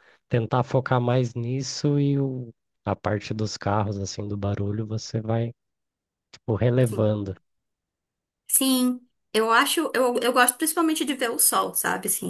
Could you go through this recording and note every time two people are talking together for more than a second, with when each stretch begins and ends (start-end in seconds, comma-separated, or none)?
none